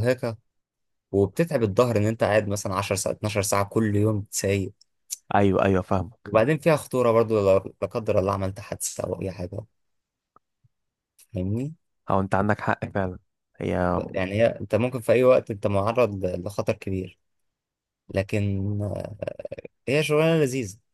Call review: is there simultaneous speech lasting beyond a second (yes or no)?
no